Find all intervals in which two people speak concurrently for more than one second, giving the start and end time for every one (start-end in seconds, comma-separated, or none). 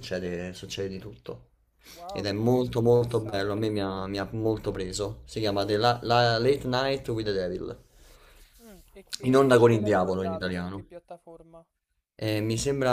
2.1-3.7, 9.2-10.8